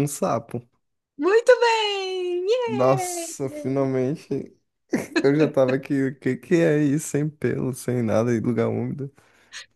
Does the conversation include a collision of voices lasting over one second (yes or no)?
yes